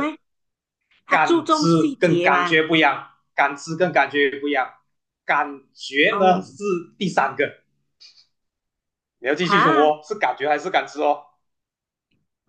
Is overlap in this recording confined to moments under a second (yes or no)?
no